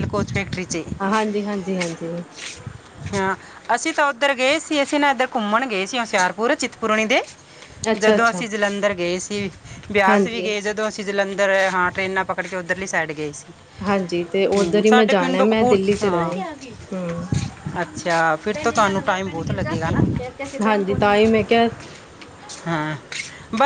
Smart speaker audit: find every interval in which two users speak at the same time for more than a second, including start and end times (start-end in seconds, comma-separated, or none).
14.6-16.3